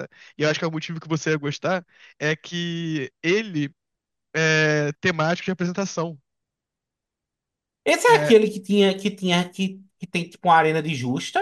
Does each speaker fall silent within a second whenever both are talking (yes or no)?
yes